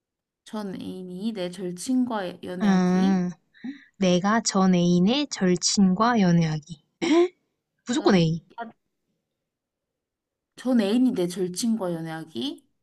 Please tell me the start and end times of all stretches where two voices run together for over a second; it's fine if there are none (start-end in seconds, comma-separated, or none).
none